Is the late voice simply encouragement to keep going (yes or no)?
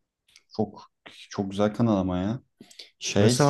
no